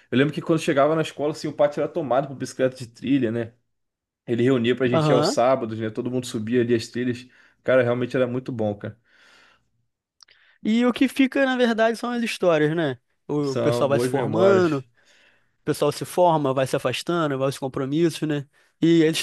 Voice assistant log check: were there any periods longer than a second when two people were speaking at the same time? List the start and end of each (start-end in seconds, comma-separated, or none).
13.4-14.8